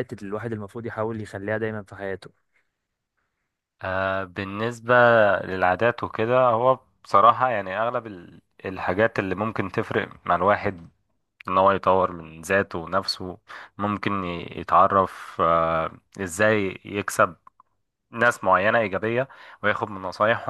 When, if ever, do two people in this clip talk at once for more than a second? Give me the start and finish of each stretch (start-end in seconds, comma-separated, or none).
none